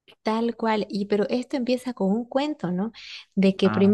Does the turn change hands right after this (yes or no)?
no